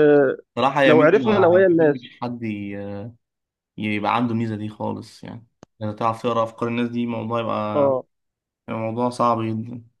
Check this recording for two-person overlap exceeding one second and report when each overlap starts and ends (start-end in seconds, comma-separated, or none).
0.9-2.1